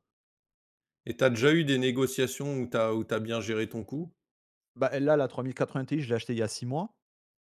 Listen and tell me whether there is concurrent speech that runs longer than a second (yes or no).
no